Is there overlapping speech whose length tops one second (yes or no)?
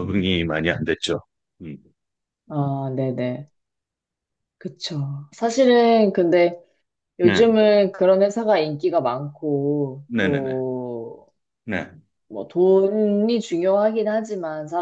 no